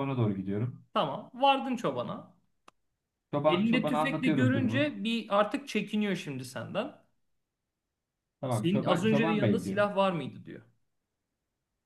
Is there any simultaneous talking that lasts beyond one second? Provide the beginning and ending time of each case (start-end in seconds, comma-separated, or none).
3.5-4.9, 8.5-9.8